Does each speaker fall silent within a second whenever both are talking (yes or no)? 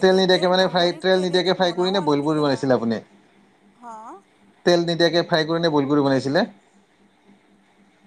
no